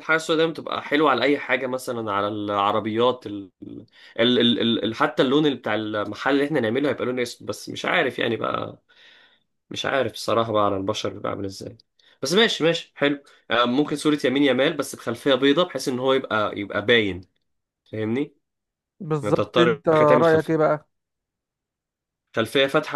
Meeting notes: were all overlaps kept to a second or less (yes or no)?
no